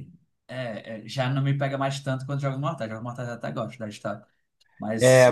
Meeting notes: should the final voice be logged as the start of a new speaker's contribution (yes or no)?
yes